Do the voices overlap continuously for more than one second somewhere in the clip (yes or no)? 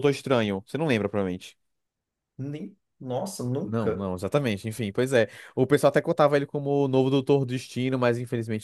no